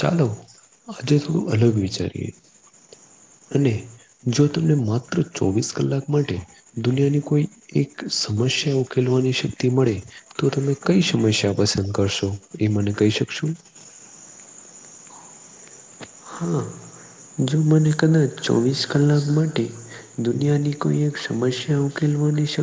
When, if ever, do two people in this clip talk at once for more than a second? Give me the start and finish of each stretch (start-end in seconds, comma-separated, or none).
1.0-2.3